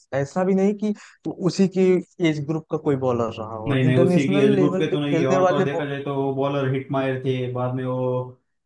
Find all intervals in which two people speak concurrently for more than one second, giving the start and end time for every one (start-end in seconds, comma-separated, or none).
3.7-5.8